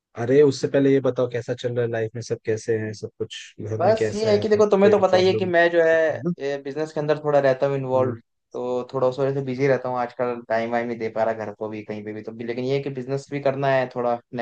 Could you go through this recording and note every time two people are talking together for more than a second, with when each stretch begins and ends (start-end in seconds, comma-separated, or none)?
3.8-5.5